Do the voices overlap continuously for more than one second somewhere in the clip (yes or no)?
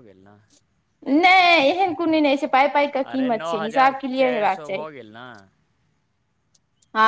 yes